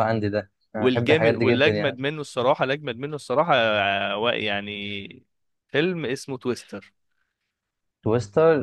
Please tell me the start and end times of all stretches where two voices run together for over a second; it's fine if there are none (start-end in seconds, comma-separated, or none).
0.8-2.0